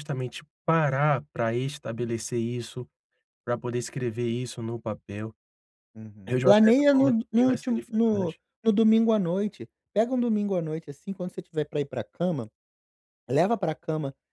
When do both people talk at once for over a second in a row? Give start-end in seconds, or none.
6.3-8.4